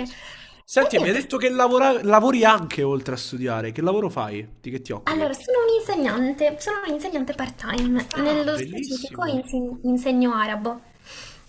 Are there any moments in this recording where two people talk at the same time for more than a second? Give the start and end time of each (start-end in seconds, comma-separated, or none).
8.1-9.3